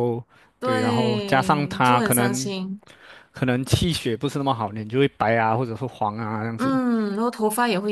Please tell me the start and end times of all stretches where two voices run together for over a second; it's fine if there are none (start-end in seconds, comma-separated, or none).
0.6-2.5